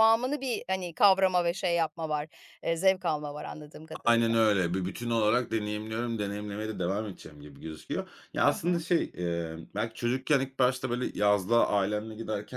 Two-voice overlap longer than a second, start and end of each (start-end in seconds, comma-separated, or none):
none